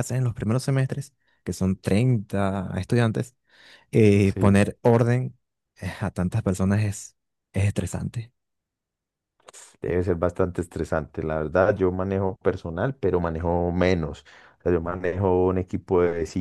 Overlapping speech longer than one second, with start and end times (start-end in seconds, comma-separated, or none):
none